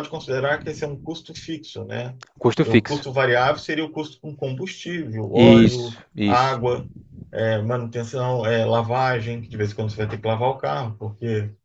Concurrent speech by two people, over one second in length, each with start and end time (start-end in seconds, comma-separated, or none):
5.3-6.6